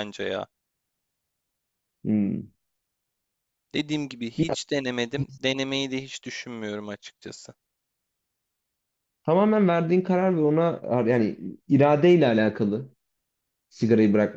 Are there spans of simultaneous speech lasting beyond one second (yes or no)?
no